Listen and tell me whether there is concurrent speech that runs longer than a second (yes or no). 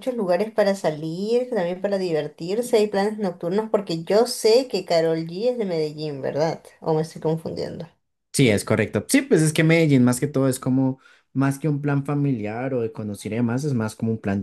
no